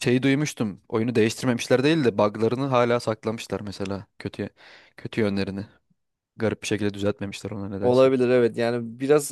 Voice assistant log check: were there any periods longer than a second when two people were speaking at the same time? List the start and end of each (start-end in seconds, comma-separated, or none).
none